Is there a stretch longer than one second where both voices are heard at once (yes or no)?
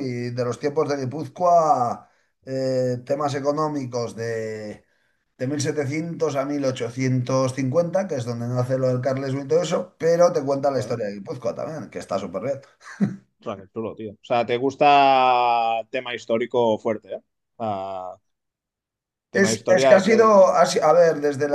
yes